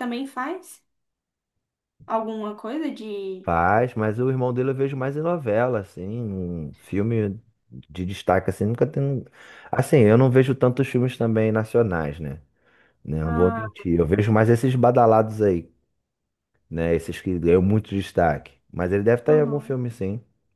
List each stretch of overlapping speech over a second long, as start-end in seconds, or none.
none